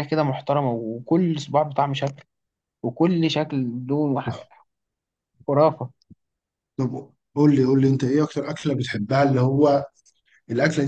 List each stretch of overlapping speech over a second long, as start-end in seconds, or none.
none